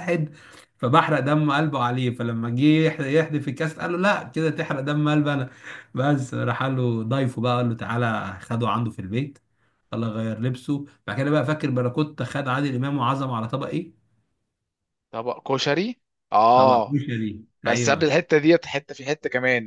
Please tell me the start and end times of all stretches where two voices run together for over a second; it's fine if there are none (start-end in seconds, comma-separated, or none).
none